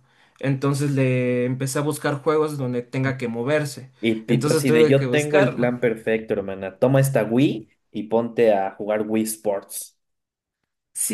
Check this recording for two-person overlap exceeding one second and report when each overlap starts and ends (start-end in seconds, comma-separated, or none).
4.3-5.7